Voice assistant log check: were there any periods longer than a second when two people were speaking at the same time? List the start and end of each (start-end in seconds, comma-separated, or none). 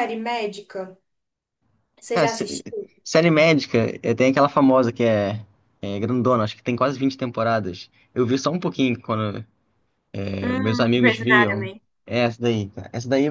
10.4-11.7